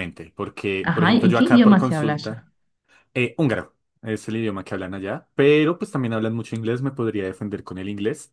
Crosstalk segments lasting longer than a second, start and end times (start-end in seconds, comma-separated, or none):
0.8-2.4